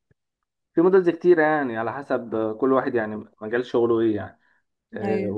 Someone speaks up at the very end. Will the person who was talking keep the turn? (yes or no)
yes